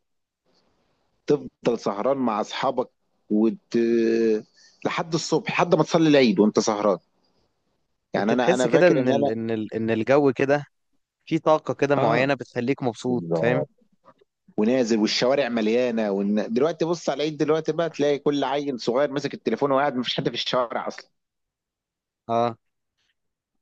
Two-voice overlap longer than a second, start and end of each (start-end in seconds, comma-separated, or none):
8.1-9.4